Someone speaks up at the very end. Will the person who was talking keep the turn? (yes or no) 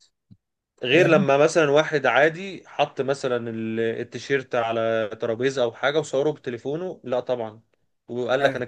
yes